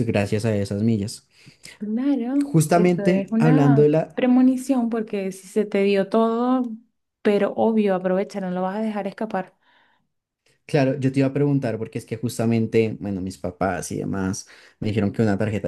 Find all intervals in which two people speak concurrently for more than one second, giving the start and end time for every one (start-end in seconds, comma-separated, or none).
2.4-4.2